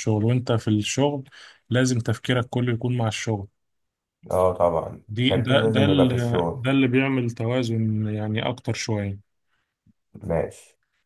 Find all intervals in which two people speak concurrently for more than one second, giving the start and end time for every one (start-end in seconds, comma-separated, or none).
5.1-6.7